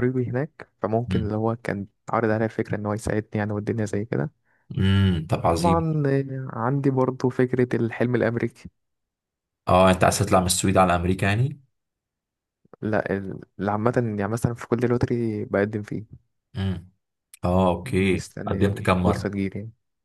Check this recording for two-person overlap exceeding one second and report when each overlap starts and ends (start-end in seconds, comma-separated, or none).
17.8-19.3